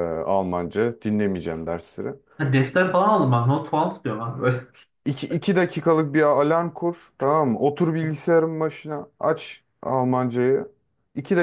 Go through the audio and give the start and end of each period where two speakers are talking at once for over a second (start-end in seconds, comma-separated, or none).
none